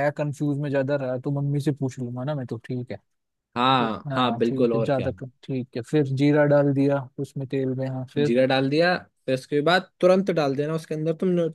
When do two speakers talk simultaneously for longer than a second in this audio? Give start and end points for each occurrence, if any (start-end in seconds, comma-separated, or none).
3.6-5.1